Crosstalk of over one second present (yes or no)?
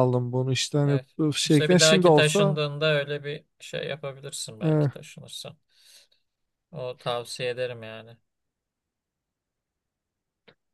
yes